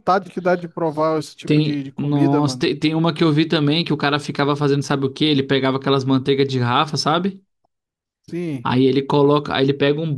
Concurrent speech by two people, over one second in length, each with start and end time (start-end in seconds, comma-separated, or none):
1.4-2.7